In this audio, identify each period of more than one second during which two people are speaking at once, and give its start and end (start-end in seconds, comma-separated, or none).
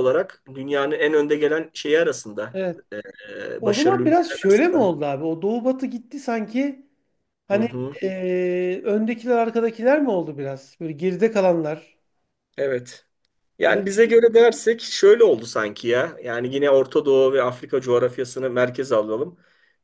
3.6-5.0